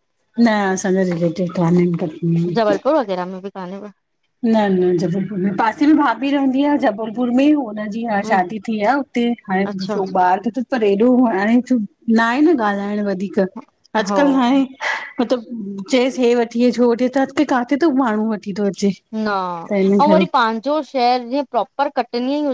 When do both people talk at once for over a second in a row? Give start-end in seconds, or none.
none